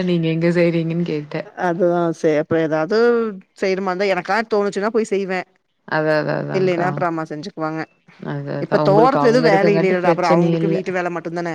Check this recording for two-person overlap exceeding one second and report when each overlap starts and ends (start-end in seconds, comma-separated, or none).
8.6-10.8